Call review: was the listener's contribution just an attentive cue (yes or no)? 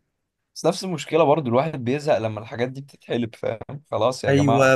no